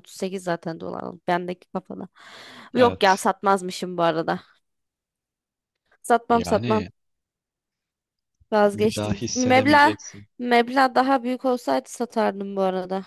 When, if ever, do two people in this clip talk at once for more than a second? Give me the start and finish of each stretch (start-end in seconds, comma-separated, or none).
8.7-9.9